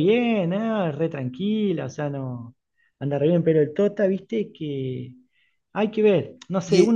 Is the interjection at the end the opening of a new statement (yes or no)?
yes